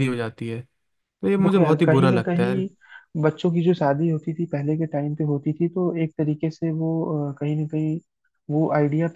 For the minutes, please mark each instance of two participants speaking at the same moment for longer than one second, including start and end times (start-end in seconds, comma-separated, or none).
1.4-2.7